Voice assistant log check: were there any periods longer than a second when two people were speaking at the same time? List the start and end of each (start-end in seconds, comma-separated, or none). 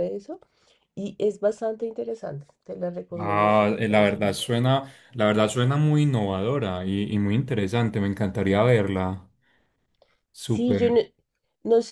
3.2-4.4